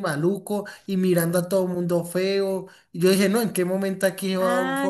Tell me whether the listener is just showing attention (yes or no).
no